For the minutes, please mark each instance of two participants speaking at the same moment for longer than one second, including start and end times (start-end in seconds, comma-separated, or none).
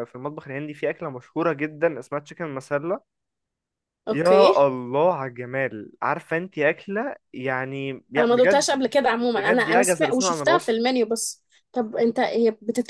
9.4-10.8